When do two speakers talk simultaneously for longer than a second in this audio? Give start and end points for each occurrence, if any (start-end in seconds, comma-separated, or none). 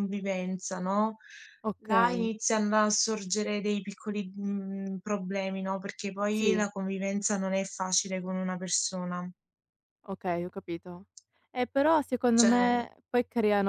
none